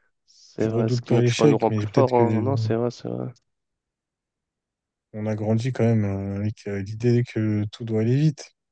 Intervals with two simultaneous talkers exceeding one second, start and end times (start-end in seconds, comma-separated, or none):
0.6-2.4